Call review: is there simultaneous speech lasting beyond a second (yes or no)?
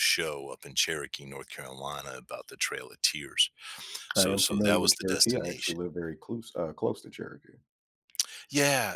yes